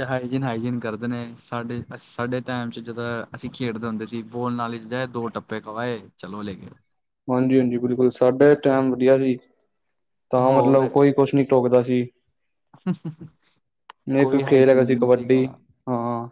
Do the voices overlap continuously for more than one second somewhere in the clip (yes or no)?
yes